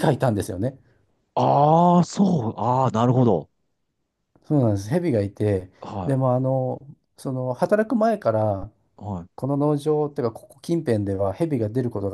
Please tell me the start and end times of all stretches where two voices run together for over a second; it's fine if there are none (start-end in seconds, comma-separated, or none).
none